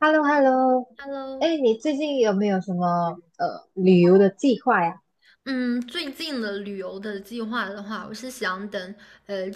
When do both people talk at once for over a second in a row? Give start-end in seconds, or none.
none